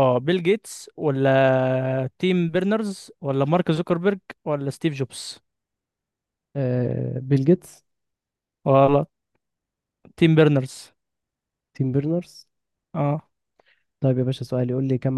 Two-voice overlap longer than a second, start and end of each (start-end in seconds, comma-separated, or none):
none